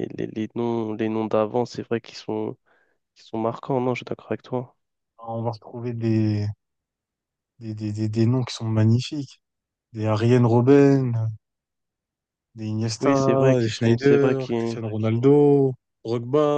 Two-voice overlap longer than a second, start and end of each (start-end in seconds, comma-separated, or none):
13.0-14.8